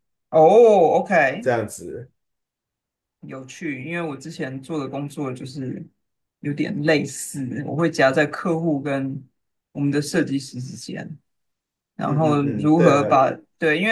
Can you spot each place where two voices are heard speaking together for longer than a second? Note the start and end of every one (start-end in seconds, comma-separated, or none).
12.0-13.2